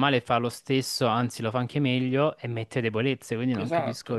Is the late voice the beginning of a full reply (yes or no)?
yes